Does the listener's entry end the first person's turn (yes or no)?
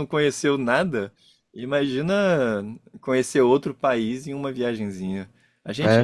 no